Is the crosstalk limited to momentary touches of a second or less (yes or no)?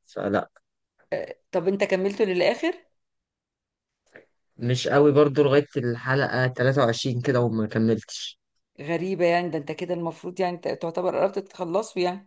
yes